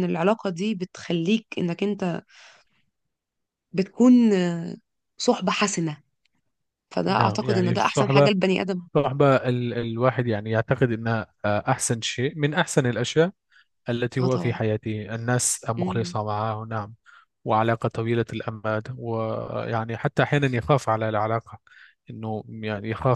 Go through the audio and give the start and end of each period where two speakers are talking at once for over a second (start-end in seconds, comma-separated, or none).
7.1-8.3